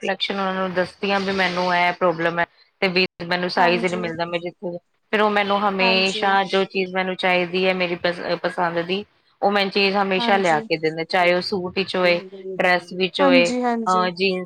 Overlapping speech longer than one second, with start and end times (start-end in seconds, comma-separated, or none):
none